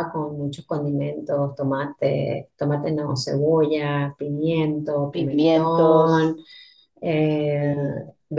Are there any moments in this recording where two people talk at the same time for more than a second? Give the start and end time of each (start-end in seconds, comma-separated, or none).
5.1-6.3